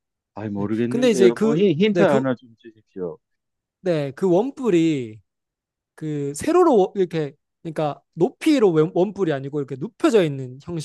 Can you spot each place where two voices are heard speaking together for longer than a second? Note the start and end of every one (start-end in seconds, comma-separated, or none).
0.6-2.2